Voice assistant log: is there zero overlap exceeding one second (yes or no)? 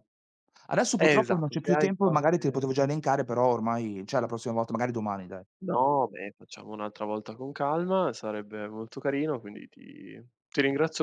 no